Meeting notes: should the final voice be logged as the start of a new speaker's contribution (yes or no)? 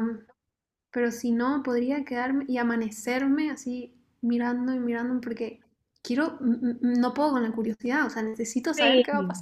yes